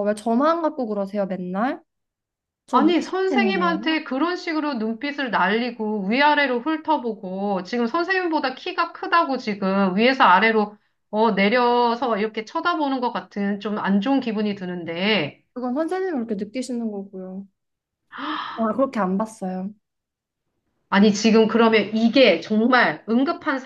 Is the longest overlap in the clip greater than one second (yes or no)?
yes